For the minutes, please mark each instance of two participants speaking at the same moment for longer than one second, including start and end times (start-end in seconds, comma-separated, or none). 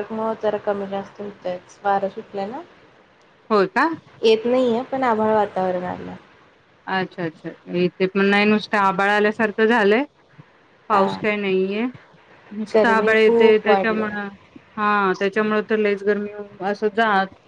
12.7-14.2